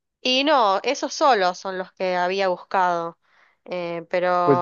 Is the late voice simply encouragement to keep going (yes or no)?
no